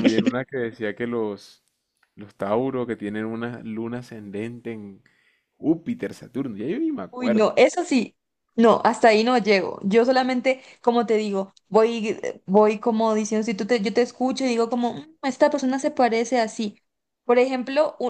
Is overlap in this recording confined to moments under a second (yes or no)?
yes